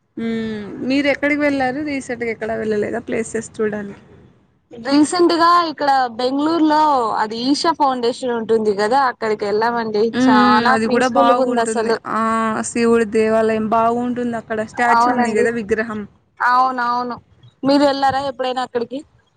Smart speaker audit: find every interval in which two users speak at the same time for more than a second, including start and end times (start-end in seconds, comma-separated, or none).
10.2-12.0